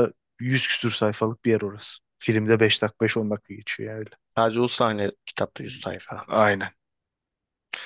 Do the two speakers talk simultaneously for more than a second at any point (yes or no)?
no